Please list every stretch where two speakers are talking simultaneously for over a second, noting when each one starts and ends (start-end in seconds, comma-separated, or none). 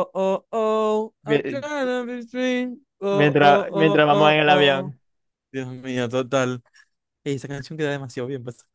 3.1-5.0